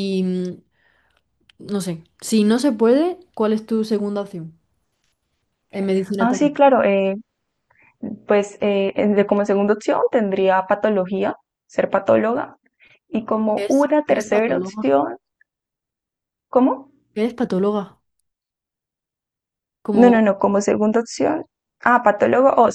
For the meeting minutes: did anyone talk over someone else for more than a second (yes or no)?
yes